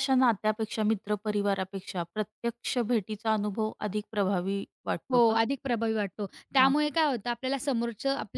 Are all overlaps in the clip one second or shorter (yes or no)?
yes